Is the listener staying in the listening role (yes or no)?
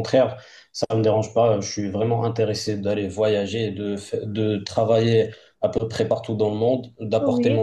yes